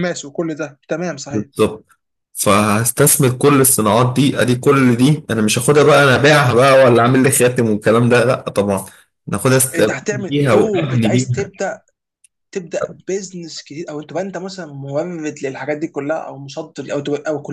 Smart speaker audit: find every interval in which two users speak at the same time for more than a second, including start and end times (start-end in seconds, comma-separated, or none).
9.8-11.5